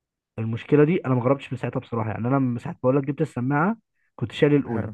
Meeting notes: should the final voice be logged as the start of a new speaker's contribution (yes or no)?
no